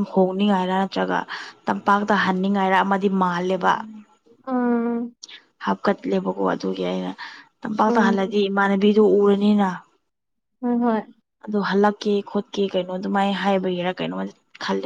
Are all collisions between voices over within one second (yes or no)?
yes